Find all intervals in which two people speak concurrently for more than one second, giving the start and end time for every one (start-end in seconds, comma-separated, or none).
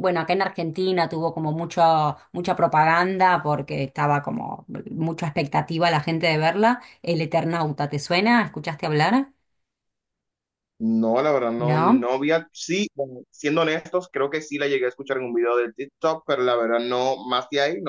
none